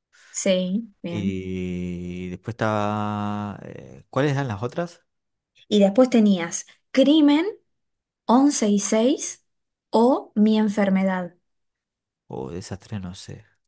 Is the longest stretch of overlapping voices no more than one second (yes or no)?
yes